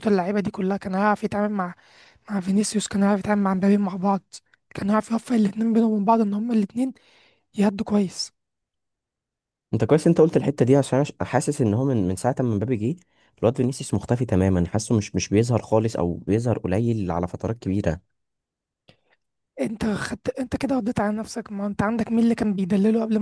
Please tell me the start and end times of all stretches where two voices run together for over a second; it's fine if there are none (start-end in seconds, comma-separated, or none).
none